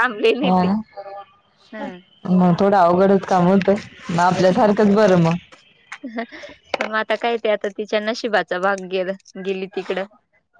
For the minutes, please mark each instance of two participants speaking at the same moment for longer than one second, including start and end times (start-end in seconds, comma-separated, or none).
none